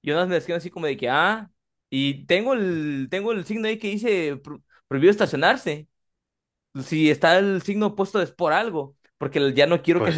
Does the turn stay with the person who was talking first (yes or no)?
no